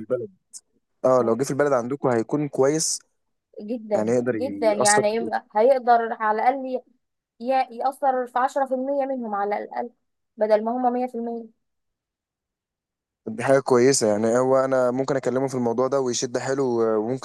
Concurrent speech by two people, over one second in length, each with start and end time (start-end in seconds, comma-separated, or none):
3.9-5.4